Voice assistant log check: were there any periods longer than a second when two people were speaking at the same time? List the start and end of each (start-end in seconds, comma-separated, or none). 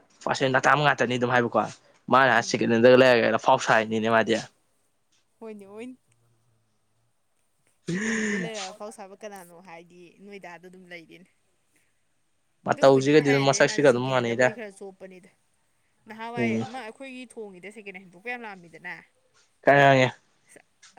12.7-14.6